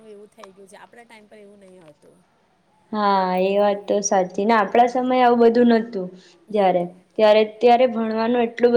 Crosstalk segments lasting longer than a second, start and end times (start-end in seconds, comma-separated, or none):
none